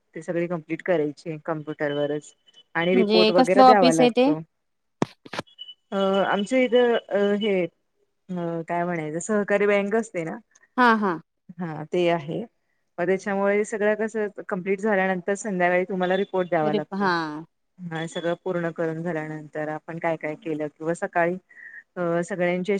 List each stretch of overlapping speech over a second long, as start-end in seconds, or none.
2.9-4.2